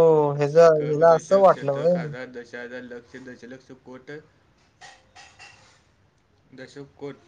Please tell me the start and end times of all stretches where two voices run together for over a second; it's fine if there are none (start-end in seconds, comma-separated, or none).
0.7-1.9